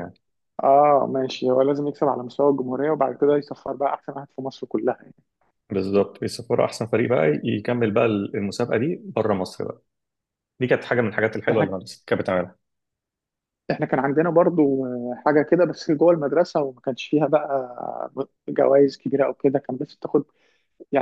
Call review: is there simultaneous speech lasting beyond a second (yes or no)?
no